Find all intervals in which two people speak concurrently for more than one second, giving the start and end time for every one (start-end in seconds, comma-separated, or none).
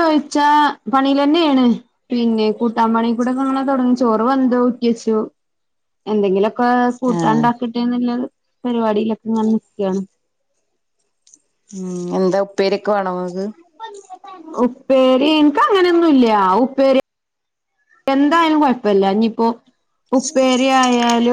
none